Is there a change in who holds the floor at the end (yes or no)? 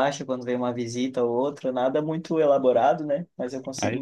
yes